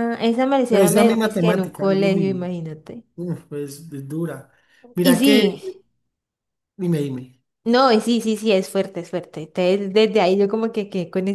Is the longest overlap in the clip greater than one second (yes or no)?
yes